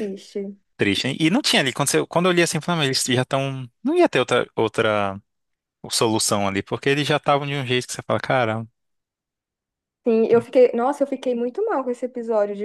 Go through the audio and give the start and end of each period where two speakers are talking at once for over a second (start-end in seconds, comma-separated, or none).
none